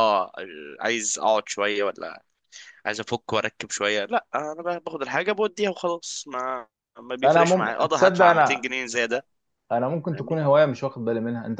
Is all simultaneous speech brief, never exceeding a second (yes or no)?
no